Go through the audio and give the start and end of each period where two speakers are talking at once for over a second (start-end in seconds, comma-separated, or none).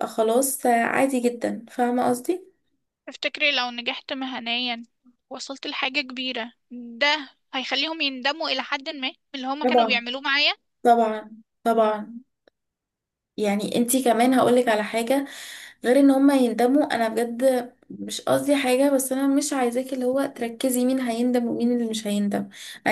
none